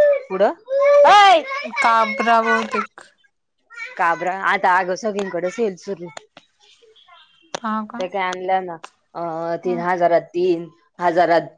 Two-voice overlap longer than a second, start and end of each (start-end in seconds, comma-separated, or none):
none